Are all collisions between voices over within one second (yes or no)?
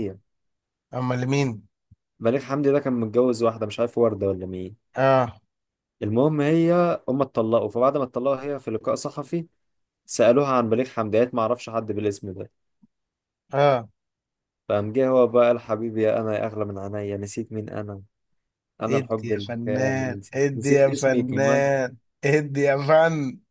no